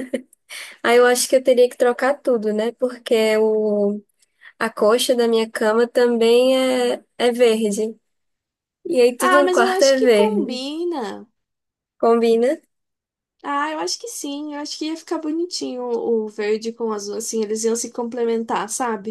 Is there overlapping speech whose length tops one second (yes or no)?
yes